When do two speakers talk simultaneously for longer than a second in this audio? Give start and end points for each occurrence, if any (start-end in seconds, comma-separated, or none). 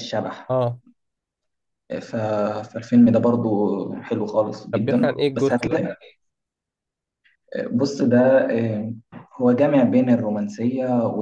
4.7-5.9